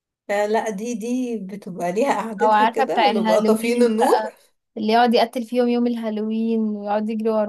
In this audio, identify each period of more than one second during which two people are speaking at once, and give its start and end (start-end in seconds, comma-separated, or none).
2.4-4.2